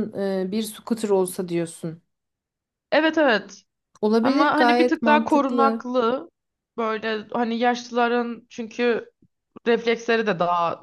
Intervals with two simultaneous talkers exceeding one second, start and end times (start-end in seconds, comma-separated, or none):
4.2-5.8